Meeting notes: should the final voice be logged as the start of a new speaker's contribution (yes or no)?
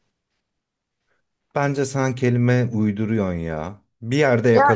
no